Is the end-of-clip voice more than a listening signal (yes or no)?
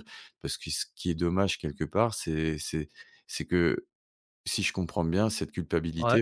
no